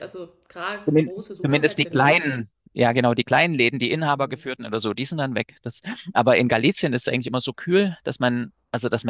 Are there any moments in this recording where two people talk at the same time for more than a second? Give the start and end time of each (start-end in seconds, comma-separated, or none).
0.8-2.4